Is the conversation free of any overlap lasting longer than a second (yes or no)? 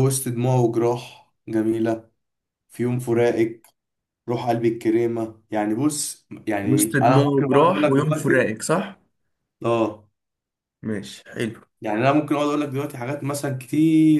no